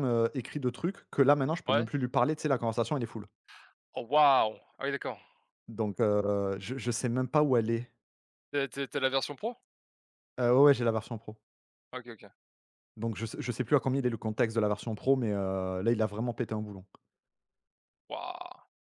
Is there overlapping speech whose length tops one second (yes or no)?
no